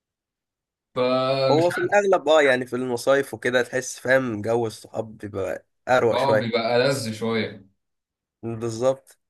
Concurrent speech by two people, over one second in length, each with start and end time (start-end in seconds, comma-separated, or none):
none